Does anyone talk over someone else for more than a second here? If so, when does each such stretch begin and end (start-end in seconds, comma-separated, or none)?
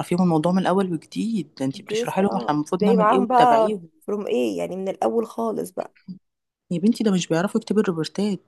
1.7-3.9